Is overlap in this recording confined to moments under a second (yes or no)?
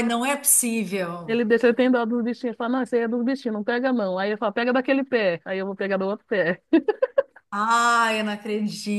yes